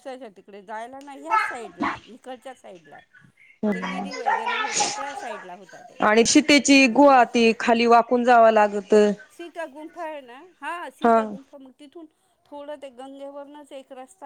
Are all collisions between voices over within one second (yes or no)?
no